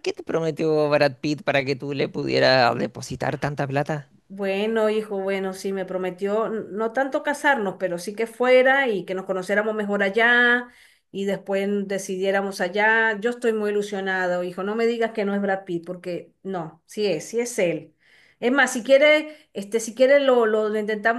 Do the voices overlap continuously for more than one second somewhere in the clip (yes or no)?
no